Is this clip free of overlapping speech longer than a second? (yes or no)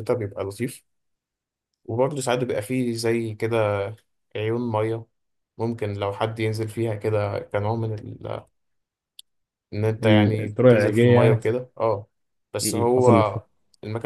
no